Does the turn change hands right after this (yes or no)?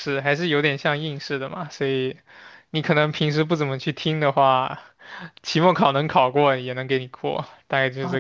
yes